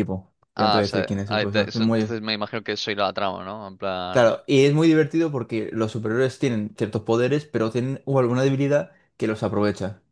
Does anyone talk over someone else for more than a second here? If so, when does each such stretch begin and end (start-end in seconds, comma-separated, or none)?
0.6-2.2